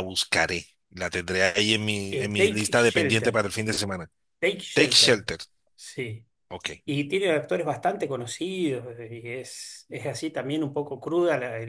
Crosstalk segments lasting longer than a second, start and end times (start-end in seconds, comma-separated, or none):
2.1-3.4